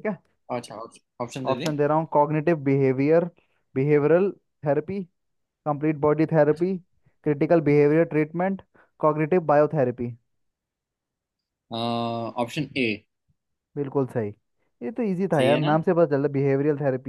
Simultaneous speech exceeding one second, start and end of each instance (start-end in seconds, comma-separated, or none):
none